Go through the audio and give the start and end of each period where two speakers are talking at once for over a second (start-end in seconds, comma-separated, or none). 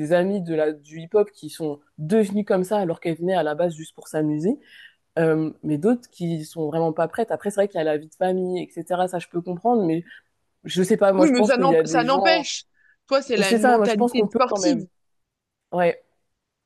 11.2-12.5, 13.4-14.8